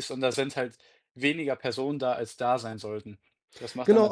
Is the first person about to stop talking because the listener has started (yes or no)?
yes